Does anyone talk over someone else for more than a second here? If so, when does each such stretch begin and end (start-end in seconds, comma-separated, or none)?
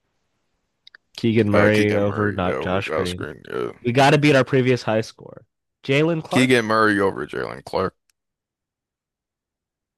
1.5-3.3